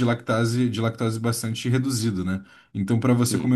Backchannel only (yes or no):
yes